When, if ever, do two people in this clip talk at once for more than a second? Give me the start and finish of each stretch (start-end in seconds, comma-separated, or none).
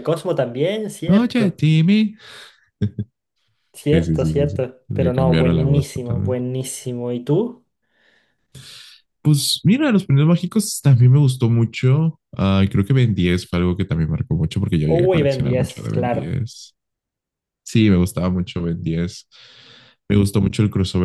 3.9-6.4, 14.9-16.3